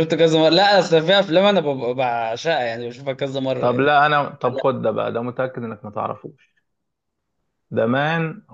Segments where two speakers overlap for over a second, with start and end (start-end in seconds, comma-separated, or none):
none